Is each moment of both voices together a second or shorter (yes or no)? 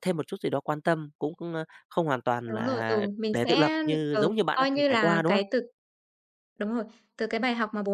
no